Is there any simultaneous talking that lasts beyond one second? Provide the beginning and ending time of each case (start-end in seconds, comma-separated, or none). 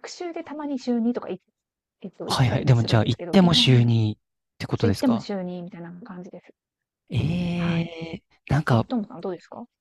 2.2-3.9